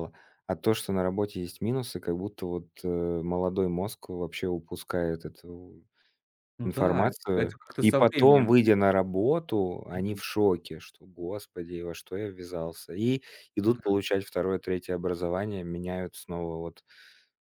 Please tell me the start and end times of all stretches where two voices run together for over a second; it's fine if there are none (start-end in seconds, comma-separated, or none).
6.6-8.5